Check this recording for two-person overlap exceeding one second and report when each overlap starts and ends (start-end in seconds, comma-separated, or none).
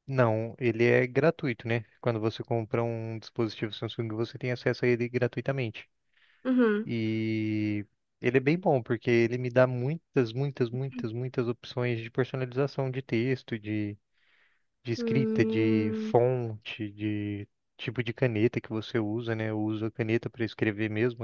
14.9-16.1